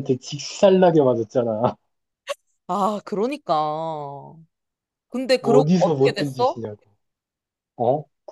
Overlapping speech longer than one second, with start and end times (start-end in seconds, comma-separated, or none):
5.4-6.6